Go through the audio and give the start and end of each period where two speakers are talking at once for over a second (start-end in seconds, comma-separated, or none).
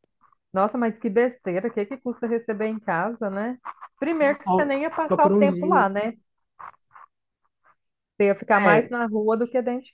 4.3-6.1